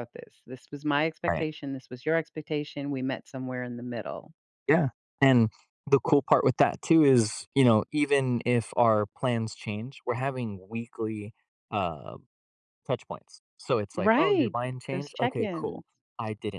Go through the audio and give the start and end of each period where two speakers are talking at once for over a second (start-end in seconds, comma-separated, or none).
14.0-15.8